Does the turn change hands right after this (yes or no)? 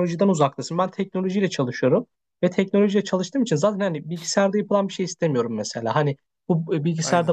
no